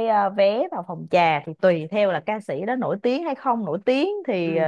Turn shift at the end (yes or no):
no